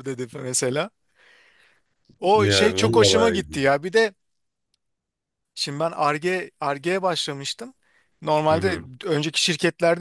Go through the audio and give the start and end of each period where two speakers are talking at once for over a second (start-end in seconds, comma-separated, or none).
2.3-3.7